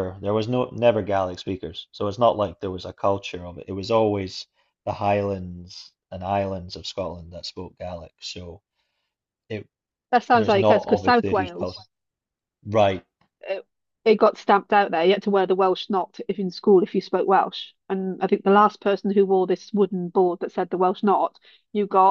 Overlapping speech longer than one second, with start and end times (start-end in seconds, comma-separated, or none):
10.3-11.8